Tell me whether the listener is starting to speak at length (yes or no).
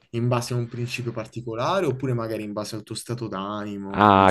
yes